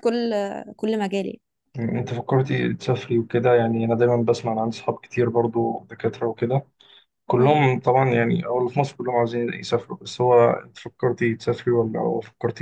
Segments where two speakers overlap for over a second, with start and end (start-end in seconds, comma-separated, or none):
none